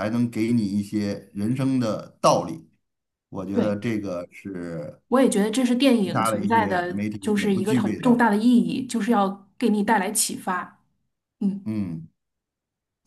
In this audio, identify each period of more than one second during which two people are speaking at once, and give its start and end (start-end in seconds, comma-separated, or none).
6.0-8.2